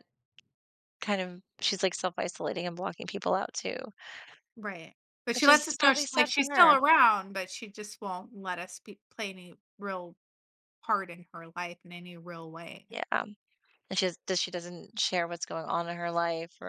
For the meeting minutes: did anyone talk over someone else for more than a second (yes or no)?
yes